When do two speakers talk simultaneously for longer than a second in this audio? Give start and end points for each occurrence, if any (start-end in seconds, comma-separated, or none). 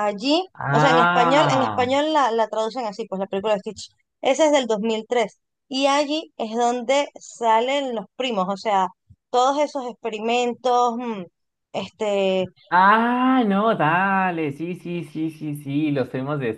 0.5-1.9